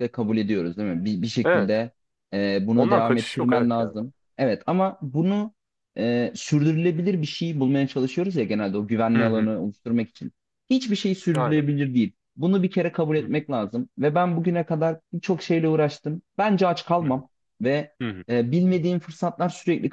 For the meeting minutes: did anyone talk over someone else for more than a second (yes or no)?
yes